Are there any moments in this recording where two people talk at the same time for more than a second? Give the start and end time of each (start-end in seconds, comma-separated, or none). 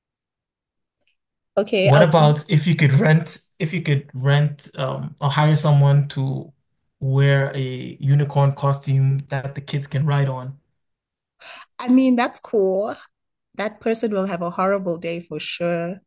none